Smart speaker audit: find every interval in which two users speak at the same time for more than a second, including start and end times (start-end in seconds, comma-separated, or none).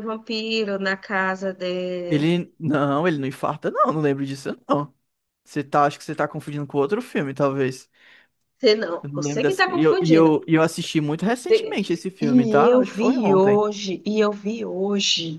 9.0-10.4, 11.5-13.6